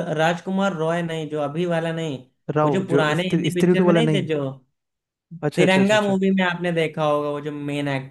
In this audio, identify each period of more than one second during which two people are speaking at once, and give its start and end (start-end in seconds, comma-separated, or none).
2.6-4.3